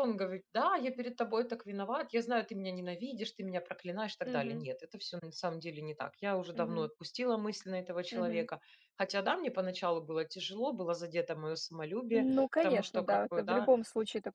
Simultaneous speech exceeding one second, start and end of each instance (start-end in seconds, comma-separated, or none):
12.1-13.7